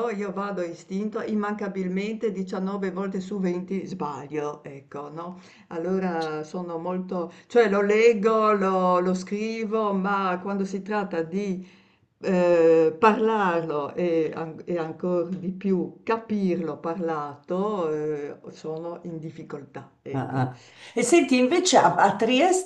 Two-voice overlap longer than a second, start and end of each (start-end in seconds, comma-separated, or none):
none